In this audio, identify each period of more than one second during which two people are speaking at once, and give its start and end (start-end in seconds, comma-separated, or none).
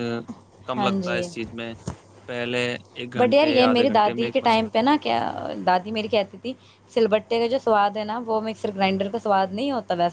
3.2-4.6